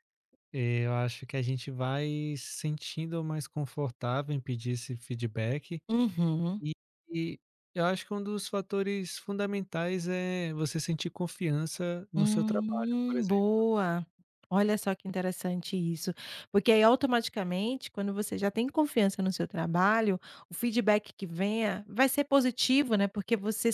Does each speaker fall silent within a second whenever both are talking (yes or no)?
no